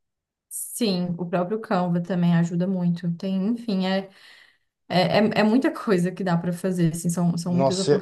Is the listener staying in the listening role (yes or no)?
no